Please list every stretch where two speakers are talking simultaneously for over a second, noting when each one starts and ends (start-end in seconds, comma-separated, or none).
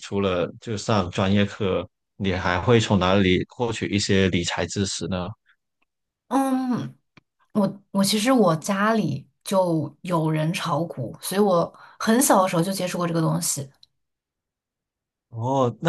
none